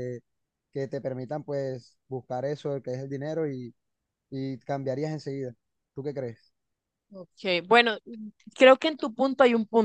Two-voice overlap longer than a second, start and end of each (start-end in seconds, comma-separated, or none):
none